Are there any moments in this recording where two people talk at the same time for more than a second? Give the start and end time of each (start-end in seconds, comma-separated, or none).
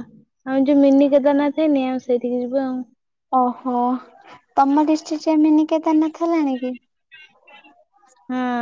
none